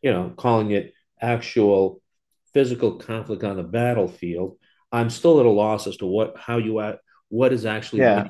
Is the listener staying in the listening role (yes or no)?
no